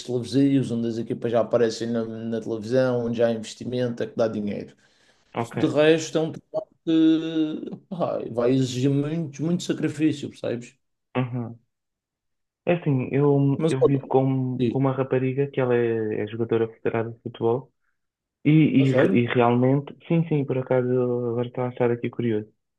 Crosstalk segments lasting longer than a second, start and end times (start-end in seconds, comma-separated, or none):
none